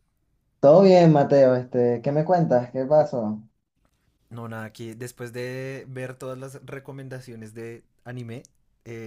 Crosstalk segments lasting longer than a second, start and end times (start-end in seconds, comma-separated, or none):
none